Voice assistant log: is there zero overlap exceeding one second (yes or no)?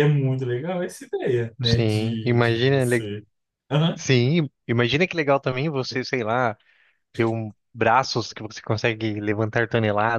no